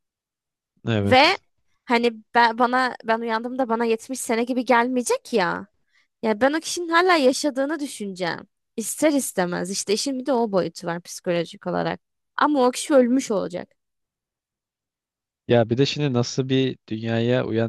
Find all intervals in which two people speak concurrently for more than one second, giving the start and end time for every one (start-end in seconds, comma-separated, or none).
none